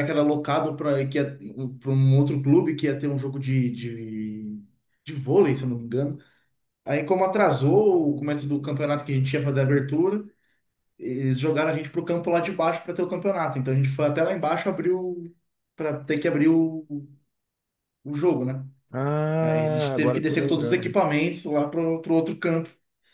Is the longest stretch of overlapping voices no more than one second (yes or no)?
no